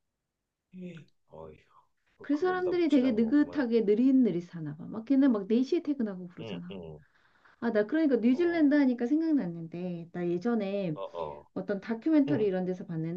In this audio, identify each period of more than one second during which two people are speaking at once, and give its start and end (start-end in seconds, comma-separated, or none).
2.2-3.6